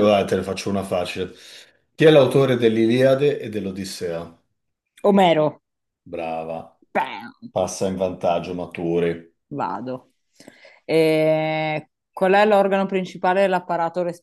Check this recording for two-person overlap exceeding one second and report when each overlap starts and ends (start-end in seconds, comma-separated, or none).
none